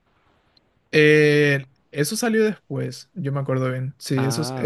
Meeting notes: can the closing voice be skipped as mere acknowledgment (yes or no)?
yes